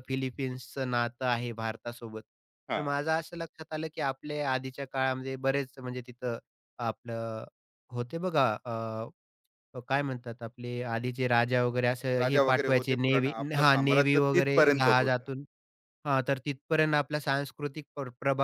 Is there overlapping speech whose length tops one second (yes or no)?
yes